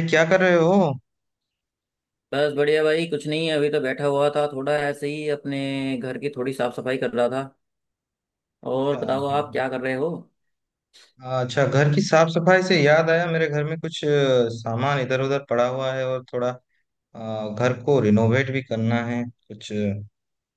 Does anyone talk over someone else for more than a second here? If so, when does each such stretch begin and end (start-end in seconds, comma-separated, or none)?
none